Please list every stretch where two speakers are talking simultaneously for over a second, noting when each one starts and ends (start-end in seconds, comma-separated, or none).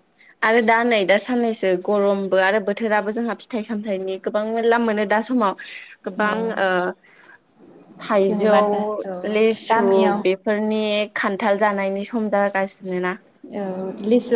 none